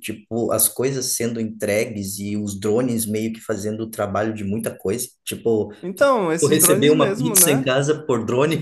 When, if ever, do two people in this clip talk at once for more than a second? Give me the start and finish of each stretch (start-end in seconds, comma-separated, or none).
6.4-7.7